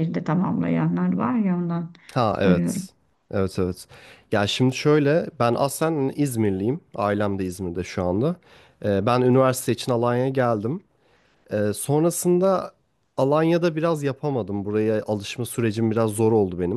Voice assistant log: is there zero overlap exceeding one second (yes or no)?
yes